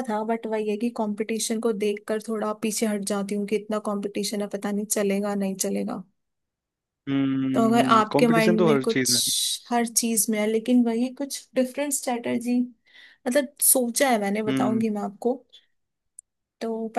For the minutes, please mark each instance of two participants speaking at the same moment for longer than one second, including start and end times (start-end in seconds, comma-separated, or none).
7.5-9.2